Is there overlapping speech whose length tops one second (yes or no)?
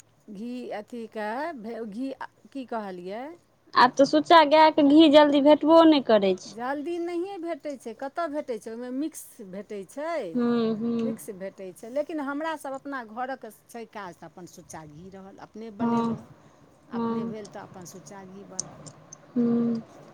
no